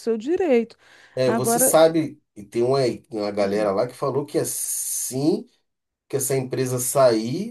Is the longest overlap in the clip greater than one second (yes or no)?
no